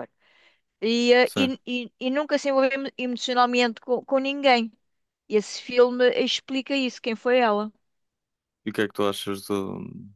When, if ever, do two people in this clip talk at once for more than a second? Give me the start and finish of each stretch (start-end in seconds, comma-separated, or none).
none